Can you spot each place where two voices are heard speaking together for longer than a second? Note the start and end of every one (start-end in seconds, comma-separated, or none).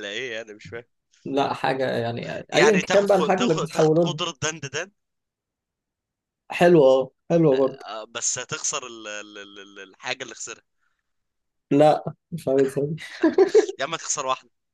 2.5-4.1